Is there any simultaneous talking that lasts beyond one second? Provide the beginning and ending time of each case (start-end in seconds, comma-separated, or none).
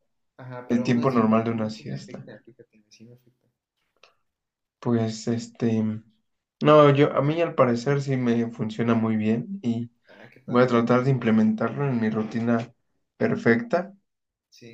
0.7-2.3